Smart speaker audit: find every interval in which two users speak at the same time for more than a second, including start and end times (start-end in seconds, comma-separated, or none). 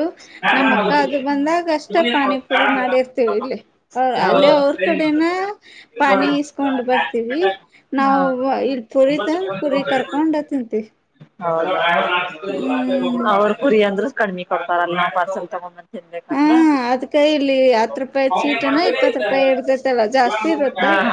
18.3-19.7